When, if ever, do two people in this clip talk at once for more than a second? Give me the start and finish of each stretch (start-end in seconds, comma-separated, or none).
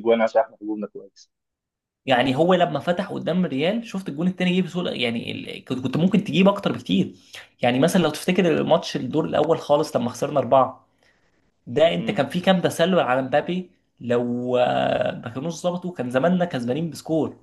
none